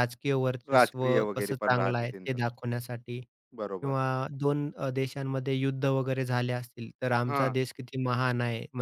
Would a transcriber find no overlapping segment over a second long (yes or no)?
no